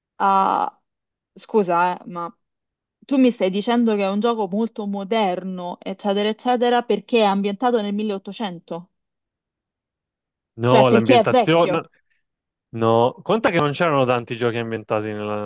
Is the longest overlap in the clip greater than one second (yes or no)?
yes